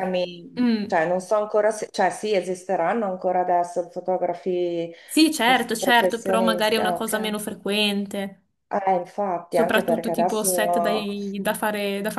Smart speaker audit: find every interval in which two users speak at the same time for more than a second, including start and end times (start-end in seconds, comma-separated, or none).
5.4-7.3, 9.5-11.1